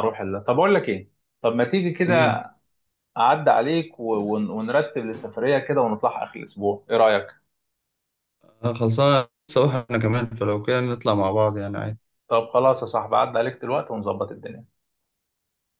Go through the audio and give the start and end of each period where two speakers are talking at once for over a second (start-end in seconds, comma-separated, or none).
none